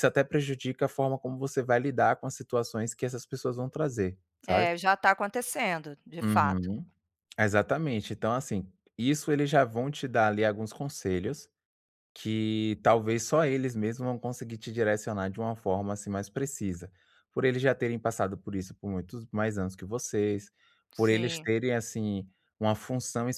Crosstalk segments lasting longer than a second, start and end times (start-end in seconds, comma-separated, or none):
none